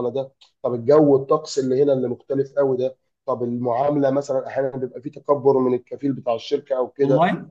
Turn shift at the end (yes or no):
no